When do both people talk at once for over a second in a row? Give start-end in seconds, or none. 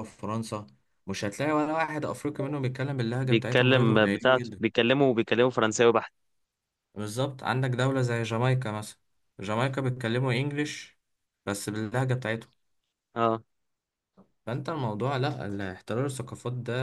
3.2-4.6